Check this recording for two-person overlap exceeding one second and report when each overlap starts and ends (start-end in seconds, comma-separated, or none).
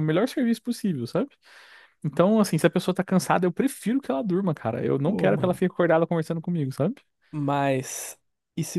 none